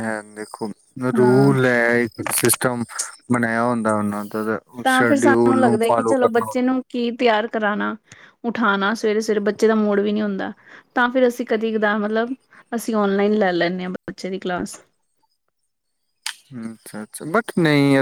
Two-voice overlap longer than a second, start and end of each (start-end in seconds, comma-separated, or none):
4.8-6.5